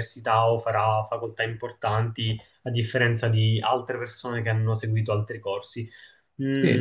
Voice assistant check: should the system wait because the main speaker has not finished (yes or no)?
no